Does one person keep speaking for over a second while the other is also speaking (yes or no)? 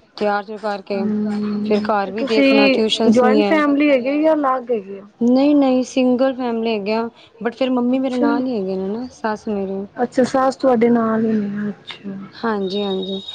yes